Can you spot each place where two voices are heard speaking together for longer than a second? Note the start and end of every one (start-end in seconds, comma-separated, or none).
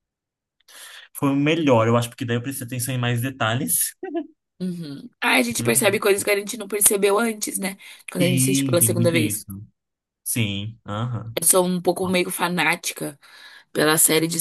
8.2-9.4